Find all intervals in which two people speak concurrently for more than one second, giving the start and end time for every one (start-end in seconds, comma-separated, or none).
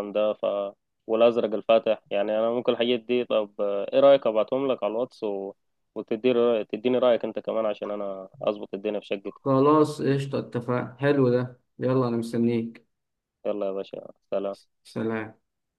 none